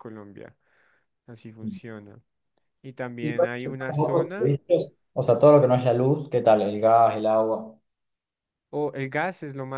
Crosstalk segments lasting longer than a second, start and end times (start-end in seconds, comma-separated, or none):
3.2-4.5